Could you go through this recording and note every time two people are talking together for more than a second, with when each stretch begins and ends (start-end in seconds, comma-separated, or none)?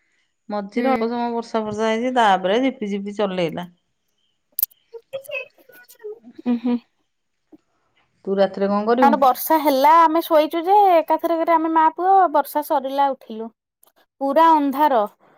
none